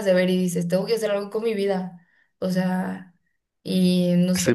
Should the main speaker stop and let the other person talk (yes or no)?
yes